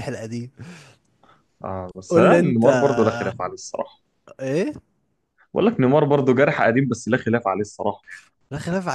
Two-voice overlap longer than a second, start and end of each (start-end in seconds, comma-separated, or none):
2.1-3.3